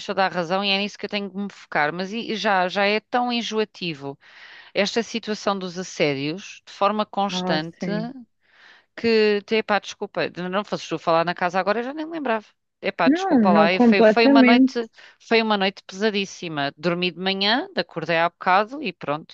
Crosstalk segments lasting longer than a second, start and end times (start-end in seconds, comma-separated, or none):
13.0-14.8